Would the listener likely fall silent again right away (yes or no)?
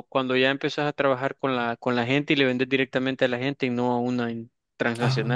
no